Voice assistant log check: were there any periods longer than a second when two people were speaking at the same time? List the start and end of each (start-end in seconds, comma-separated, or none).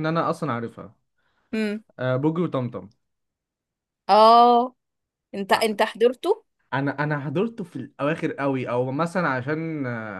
none